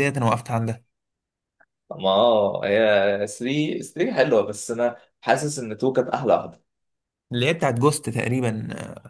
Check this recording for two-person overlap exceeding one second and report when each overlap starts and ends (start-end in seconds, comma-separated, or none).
none